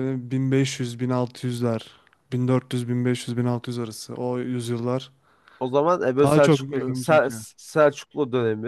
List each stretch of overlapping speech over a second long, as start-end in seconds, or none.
6.2-7.5